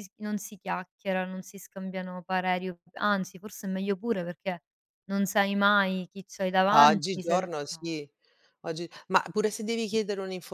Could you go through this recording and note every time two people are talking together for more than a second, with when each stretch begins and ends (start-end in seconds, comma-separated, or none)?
6.7-8.0